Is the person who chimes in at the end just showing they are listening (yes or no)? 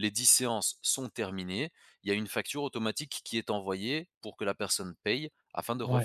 no